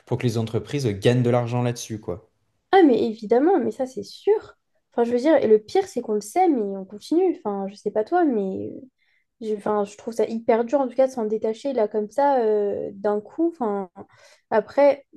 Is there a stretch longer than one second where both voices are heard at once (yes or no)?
no